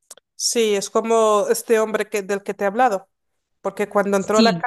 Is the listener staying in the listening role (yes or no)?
yes